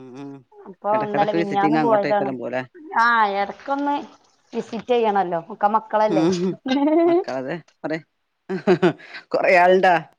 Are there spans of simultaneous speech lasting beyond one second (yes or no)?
yes